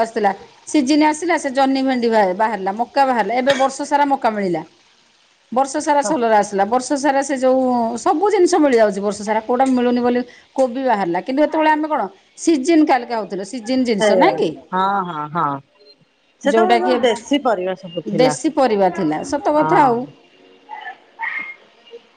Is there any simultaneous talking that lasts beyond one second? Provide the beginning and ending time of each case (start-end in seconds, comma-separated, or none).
16.6-18.3